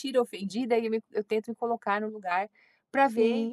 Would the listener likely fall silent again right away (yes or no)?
no